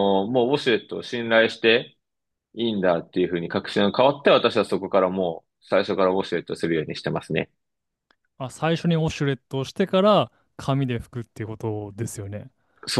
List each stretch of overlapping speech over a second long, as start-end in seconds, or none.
none